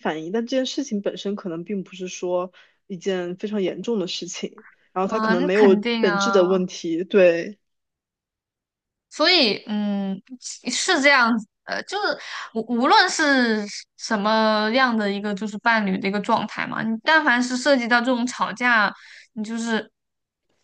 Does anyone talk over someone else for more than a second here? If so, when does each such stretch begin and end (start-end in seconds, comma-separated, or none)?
5.0-6.4